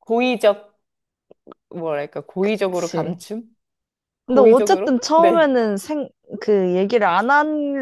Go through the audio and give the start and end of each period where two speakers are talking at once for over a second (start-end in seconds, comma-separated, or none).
4.3-5.6